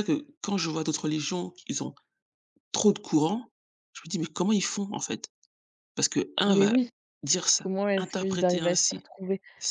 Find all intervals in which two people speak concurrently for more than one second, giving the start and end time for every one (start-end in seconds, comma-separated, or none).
7.6-9.1